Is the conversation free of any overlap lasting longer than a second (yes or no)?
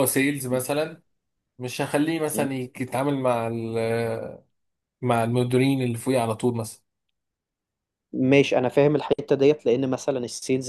yes